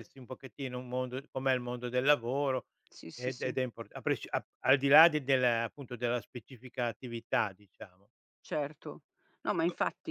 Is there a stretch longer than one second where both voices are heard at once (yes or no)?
no